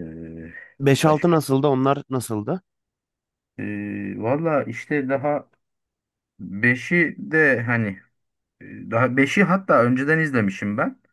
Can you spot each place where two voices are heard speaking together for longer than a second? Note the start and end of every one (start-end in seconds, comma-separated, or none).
none